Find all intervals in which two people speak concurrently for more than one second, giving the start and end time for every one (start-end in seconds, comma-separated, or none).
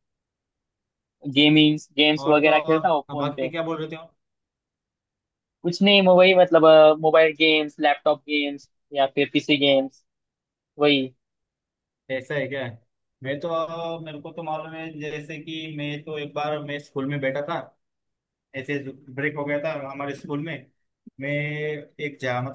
2.2-3.5